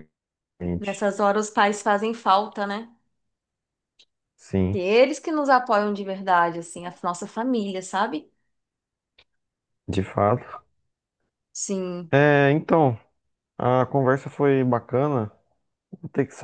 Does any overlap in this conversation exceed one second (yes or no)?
no